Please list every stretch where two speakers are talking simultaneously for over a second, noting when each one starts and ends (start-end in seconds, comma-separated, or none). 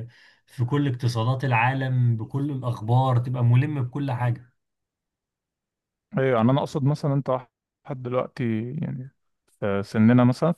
none